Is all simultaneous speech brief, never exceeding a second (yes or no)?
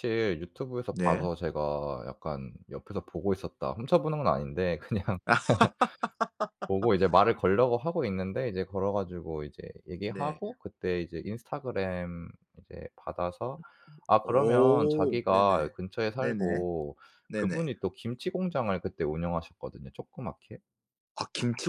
no